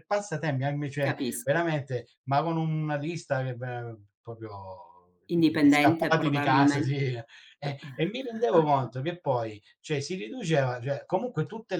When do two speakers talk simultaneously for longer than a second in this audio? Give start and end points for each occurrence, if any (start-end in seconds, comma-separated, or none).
5.3-7.0